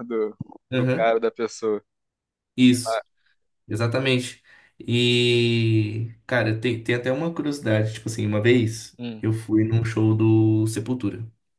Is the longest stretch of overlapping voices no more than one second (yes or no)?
yes